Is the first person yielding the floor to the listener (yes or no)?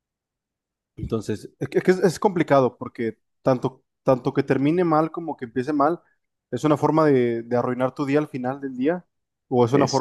no